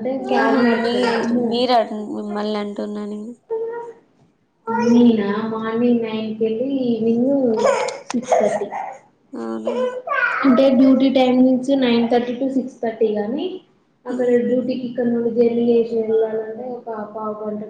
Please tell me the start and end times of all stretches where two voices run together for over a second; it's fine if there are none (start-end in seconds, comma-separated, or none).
none